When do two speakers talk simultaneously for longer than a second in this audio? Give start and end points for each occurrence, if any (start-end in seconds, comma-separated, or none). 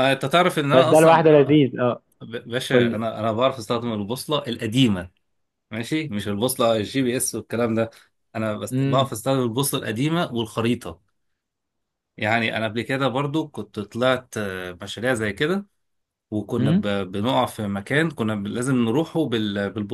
none